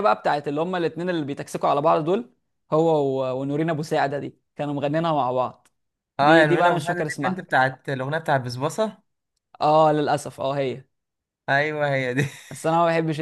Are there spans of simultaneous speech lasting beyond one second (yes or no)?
yes